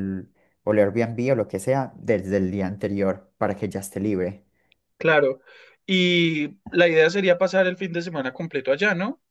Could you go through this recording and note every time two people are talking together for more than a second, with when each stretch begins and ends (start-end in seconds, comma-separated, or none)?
none